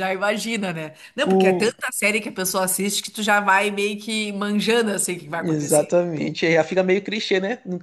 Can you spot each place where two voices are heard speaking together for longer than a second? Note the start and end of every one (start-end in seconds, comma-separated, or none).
none